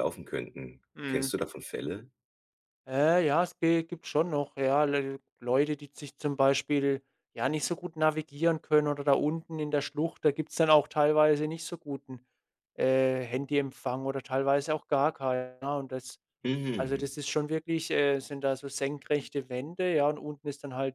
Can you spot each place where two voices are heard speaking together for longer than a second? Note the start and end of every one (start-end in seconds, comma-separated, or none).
none